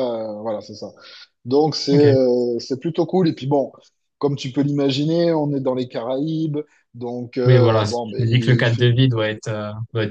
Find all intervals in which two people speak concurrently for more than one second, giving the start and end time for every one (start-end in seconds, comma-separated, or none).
7.5-8.9